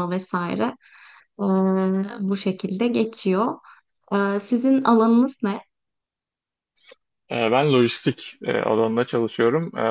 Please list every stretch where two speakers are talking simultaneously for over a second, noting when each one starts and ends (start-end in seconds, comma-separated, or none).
none